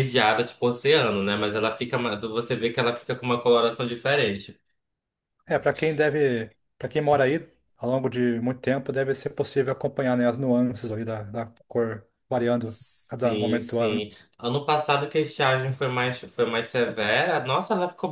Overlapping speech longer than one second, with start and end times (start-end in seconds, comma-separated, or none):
12.6-14.0